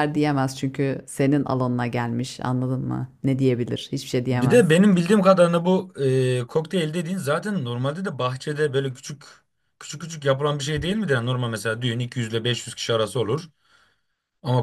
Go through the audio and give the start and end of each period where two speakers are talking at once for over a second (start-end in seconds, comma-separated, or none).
none